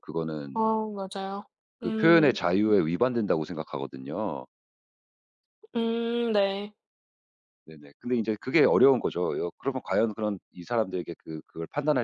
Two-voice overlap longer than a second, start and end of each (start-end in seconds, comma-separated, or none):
none